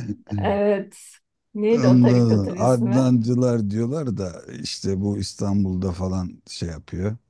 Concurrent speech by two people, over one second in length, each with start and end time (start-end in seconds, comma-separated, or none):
1.7-3.1